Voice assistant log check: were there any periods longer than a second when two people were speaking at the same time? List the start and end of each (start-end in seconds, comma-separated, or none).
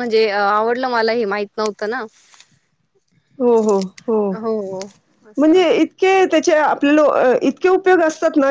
none